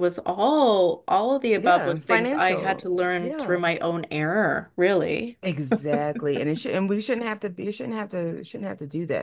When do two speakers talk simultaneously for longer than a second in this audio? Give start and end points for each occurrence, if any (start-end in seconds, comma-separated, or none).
1.6-3.6